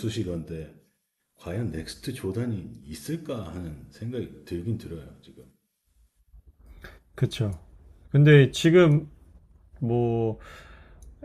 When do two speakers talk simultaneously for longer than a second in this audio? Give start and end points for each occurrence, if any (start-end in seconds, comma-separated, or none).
none